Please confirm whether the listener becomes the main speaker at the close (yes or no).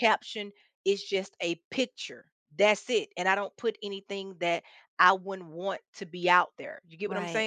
yes